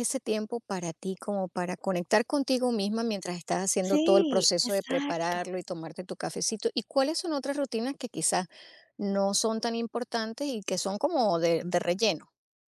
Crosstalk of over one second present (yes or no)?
yes